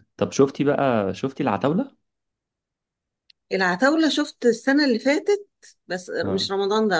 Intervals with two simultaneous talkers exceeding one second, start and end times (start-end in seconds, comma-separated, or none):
none